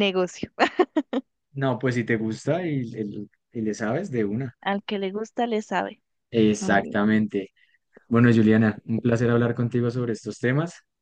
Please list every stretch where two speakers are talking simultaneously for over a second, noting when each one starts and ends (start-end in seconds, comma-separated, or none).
none